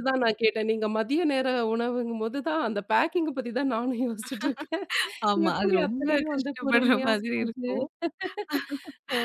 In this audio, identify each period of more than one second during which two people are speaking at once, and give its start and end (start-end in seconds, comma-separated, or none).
5.5-7.7